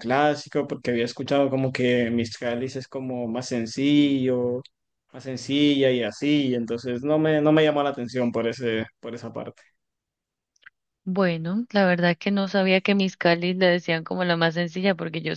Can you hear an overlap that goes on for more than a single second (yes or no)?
no